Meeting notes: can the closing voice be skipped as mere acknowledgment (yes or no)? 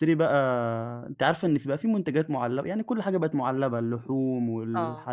yes